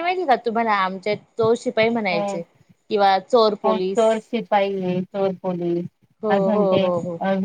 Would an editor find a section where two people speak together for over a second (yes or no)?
no